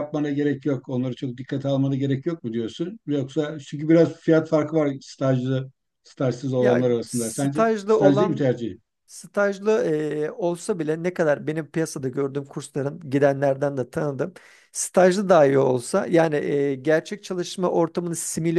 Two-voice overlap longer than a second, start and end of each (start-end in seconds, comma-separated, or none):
6.6-8.5